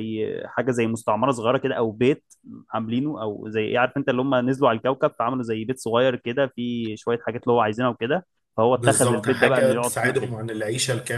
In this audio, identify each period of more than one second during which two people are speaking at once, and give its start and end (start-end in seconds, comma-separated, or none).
8.8-10.3